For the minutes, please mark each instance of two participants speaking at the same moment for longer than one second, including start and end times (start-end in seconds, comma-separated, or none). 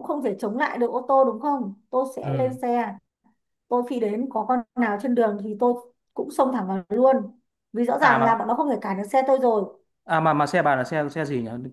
none